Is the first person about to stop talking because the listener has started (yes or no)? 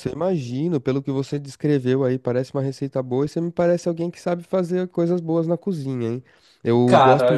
no